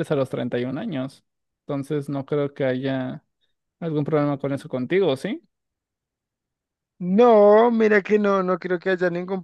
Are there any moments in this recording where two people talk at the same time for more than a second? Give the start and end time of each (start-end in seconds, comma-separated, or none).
none